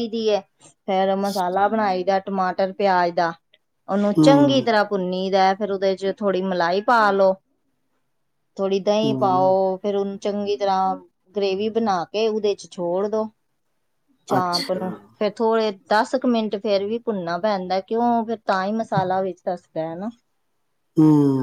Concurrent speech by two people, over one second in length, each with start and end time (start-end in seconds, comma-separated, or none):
none